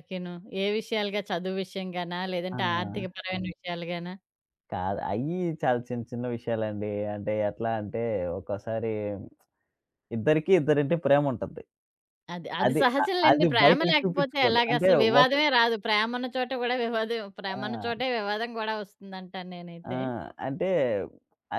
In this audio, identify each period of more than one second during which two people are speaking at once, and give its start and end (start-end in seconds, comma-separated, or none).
12.7-15.3